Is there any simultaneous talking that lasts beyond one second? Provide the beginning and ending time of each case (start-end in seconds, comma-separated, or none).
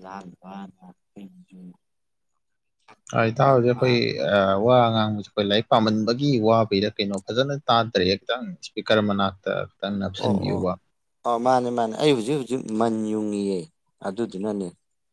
none